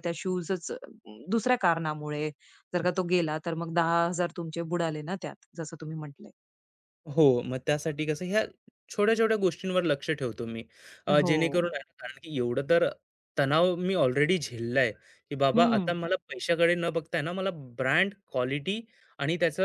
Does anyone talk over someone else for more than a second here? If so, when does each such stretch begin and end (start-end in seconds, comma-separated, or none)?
none